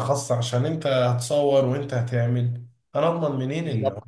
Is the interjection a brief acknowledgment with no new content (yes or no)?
no